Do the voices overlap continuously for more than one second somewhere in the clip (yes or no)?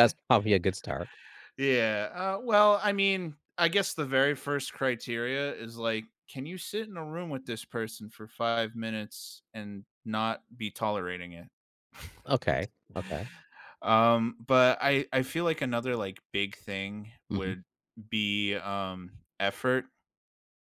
no